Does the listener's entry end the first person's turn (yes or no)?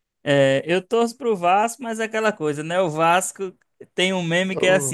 no